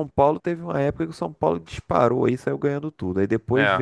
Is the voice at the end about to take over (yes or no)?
no